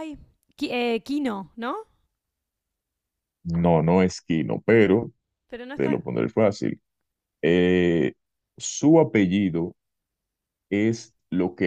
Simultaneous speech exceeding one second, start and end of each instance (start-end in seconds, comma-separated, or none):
none